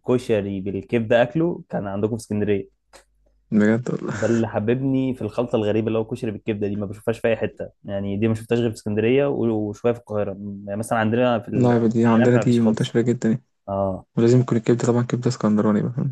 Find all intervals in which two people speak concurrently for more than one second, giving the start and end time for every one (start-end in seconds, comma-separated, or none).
11.5-13.0